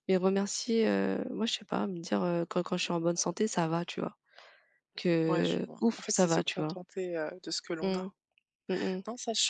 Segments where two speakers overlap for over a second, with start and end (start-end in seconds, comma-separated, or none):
5.3-6.8